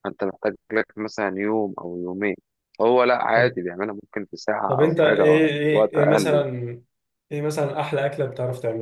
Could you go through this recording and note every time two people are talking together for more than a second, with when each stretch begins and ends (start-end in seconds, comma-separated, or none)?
4.7-6.5